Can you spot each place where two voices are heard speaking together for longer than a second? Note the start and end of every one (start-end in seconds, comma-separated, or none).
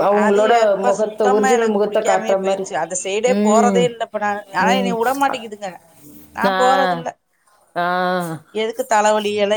0.9-2.6